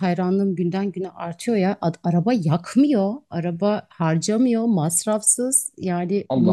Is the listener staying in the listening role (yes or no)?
yes